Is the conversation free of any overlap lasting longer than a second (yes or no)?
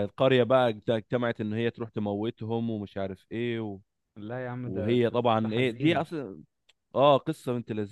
no